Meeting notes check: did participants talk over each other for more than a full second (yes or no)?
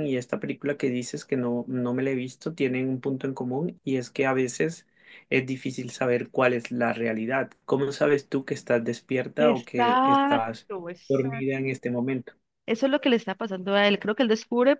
yes